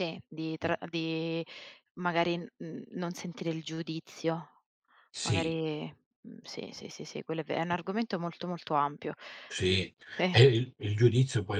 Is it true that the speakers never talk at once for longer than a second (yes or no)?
yes